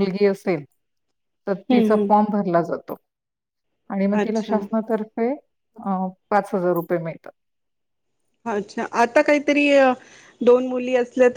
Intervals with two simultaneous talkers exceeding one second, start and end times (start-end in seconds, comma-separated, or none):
none